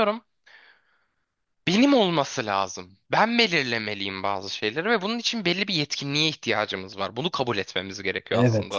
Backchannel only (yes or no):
no